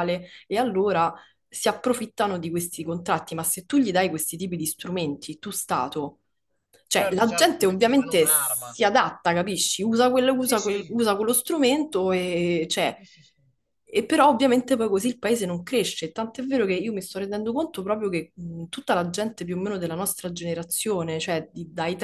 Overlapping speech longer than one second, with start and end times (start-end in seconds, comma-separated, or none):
6.9-8.8